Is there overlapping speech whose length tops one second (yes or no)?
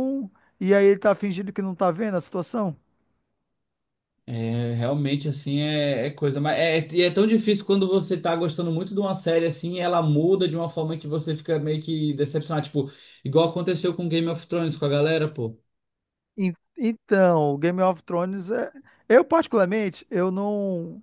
no